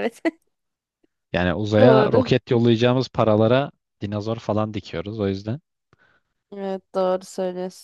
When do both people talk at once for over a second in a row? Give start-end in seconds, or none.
none